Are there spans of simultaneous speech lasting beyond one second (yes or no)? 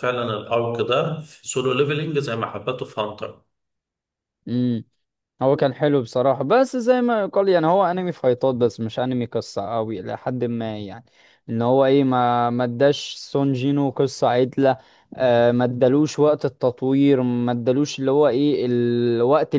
no